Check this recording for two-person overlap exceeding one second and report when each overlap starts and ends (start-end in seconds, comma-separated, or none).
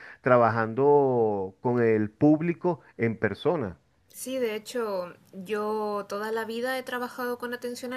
none